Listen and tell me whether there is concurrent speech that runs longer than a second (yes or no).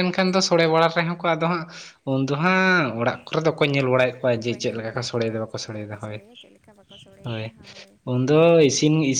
yes